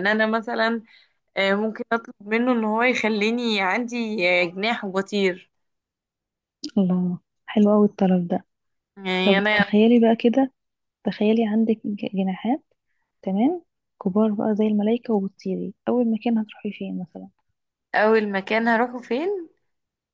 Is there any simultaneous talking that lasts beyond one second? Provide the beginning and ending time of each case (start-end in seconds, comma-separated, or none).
none